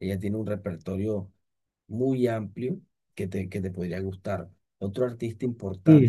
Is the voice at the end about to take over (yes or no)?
yes